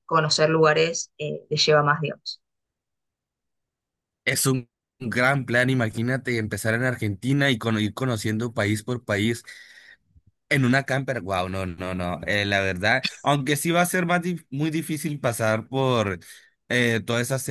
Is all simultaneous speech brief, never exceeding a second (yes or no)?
yes